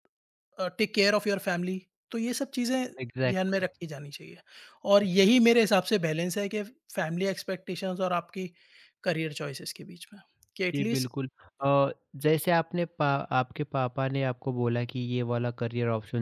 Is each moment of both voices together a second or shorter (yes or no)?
yes